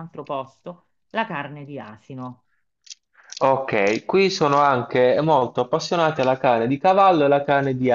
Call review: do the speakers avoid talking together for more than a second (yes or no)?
yes